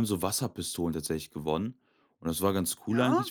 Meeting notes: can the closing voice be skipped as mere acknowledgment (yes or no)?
yes